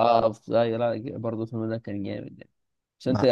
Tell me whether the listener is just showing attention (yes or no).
yes